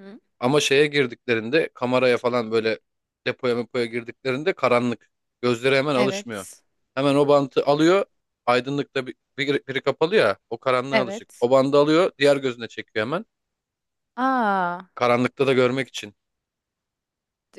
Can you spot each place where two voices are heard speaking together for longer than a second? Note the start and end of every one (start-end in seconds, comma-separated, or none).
none